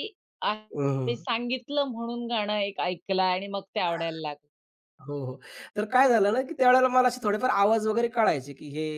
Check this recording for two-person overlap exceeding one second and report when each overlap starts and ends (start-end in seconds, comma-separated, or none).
none